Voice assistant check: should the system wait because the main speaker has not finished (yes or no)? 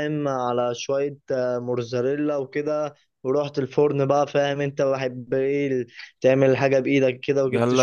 no